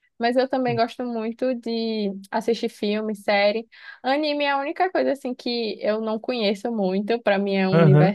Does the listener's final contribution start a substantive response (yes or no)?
no